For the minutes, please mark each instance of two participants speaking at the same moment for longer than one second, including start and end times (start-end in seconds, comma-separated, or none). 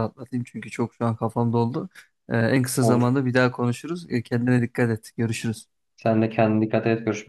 none